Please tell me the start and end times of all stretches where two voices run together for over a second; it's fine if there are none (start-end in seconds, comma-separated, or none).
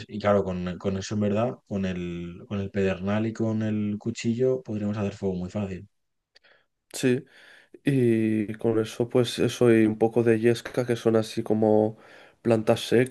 none